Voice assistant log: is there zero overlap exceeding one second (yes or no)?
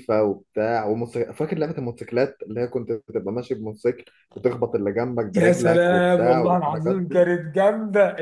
no